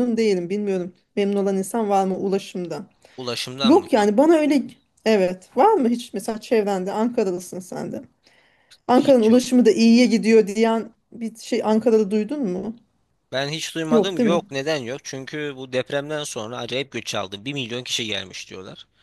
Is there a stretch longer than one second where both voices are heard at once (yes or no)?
no